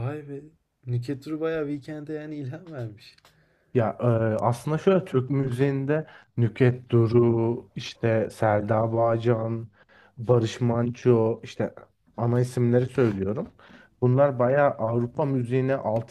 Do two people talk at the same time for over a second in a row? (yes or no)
no